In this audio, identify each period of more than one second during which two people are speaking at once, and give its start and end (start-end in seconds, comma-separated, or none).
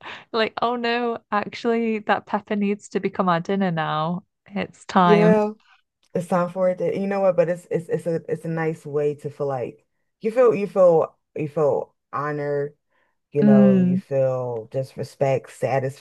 none